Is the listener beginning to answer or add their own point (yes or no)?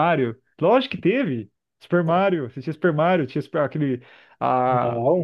no